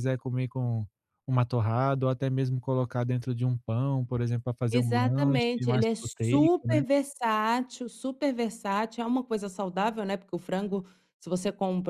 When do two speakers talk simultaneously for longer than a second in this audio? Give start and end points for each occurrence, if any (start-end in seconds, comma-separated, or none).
4.7-6.8